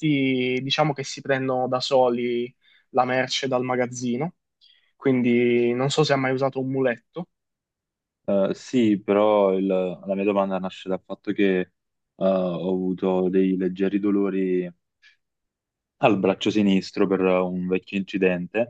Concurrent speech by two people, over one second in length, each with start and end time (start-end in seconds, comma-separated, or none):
none